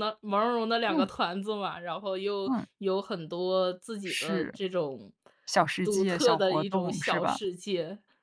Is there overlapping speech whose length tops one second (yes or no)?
yes